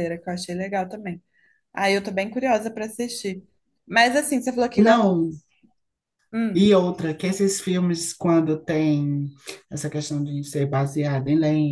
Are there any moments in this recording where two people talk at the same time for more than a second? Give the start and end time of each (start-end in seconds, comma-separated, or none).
none